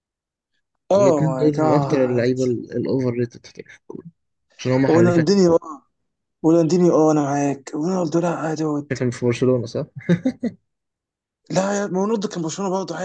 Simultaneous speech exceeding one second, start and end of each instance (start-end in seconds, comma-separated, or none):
0.9-2.3